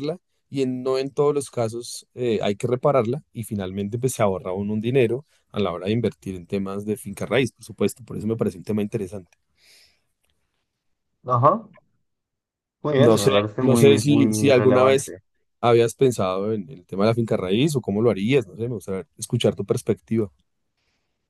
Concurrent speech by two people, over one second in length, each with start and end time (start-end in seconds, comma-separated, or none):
12.9-15.2